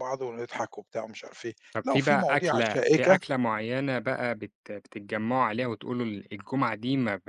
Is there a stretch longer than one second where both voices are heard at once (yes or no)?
yes